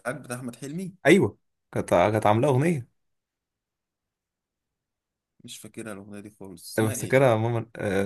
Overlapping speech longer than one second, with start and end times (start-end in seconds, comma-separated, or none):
none